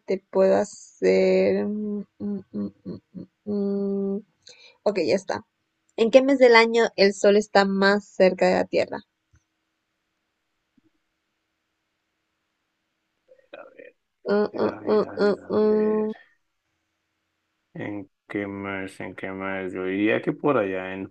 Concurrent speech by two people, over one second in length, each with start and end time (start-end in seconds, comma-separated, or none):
14.5-16.1